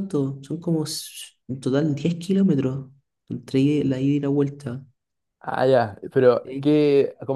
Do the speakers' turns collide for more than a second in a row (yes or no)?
no